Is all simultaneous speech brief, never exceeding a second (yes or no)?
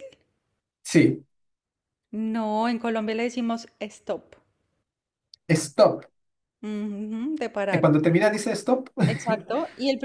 yes